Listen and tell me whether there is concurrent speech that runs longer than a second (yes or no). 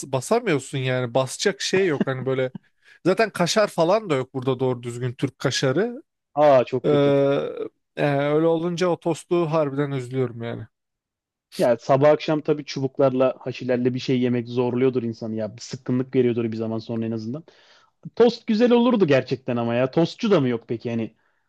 no